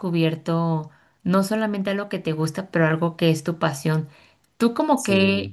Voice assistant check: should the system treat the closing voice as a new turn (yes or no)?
no